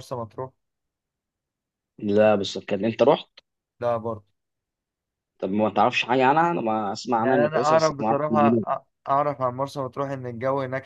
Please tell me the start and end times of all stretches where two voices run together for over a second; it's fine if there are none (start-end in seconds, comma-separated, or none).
7.2-8.6